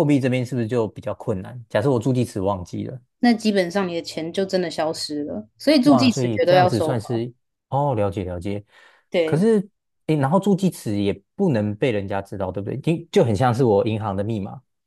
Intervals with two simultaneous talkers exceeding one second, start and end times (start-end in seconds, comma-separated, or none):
5.8-7.3